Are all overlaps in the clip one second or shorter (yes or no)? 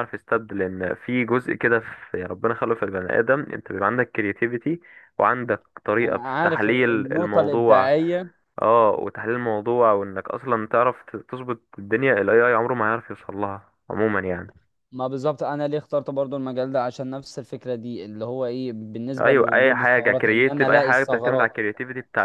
no